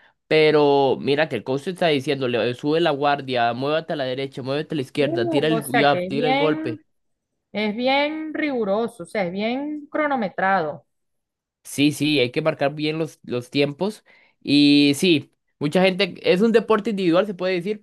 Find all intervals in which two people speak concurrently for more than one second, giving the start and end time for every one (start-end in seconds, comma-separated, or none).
5.0-6.8